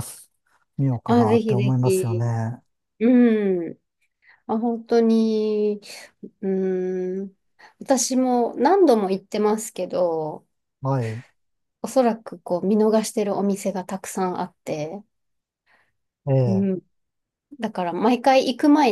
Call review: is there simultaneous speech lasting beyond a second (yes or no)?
yes